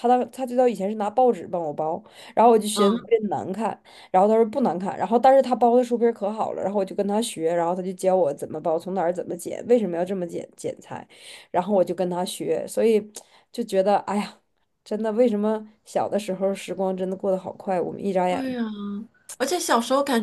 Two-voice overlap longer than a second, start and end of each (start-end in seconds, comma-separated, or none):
none